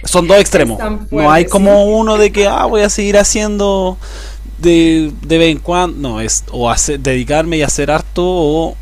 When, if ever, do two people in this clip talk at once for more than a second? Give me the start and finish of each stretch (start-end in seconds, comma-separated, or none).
0.5-2.0